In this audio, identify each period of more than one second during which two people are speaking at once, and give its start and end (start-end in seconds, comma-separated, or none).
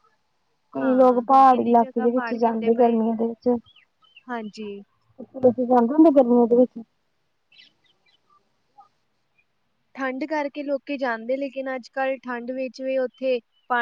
0.8-3.0